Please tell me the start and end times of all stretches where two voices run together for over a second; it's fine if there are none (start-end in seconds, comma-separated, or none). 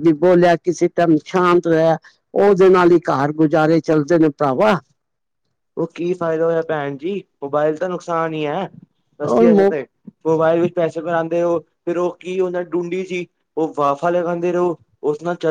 none